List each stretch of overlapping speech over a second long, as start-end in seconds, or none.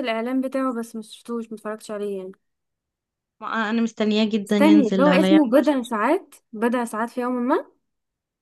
4.5-6.0